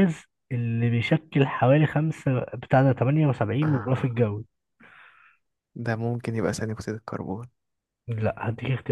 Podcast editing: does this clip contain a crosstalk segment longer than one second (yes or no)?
no